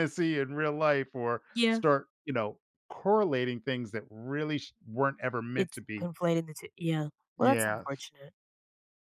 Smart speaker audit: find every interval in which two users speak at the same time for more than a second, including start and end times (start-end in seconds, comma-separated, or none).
none